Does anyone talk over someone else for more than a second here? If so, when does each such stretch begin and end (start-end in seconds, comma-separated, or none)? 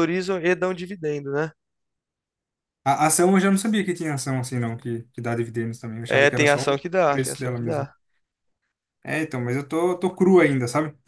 6.1-7.9